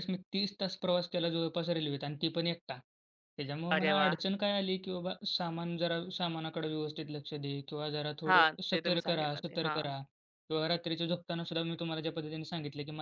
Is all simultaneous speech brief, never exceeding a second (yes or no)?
no